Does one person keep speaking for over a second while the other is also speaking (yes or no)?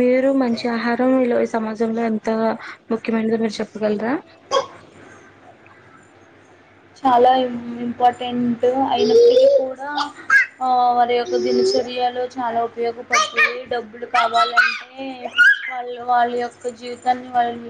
no